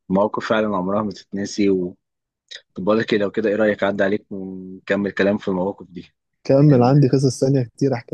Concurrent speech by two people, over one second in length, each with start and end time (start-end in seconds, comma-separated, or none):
none